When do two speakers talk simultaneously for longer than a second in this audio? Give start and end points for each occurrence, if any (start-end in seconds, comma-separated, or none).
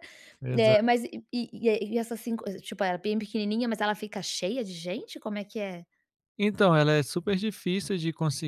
none